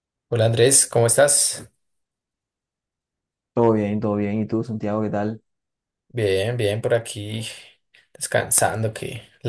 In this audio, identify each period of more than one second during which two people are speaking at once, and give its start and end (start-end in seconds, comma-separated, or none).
none